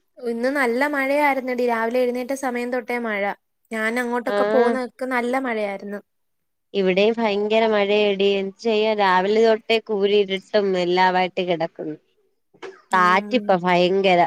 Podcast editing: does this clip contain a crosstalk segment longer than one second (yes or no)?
no